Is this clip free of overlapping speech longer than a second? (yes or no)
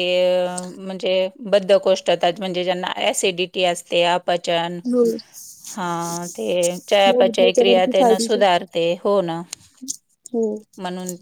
no